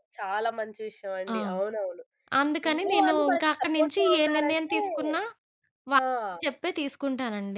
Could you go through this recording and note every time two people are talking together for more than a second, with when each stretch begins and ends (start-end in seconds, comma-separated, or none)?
2.7-4.8